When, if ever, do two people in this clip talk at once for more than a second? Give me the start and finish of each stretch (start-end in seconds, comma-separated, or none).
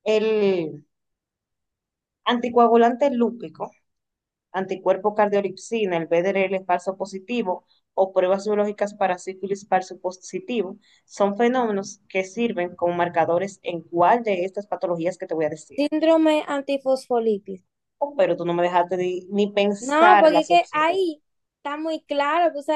19.8-21.0